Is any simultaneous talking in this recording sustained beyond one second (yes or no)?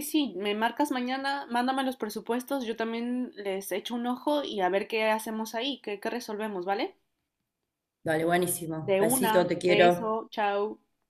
yes